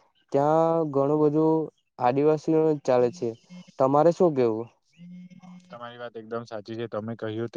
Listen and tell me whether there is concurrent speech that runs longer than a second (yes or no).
no